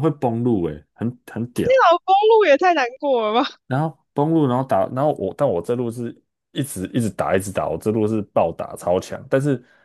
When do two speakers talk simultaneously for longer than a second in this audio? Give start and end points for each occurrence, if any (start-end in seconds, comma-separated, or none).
none